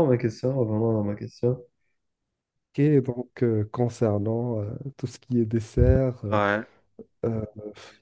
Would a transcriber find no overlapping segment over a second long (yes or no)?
yes